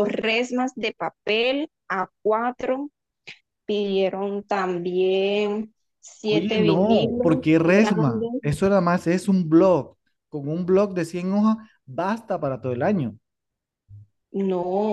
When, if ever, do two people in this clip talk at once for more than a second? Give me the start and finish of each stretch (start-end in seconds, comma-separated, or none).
6.3-8.4